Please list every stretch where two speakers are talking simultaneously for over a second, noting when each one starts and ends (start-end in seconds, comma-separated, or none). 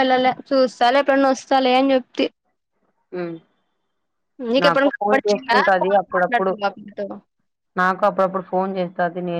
4.6-6.5